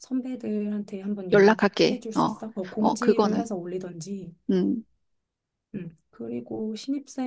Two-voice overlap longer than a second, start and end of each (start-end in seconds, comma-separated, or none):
1.3-3.5